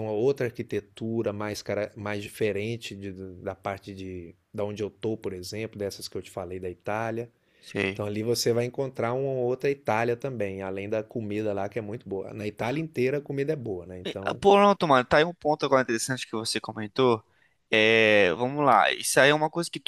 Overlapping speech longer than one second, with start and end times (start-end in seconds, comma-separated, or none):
none